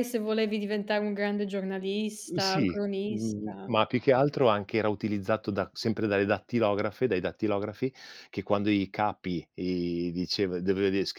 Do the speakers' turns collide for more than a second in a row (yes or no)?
yes